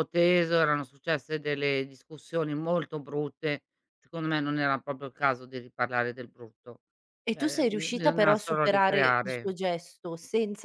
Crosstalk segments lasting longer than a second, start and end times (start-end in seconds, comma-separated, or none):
7.3-9.6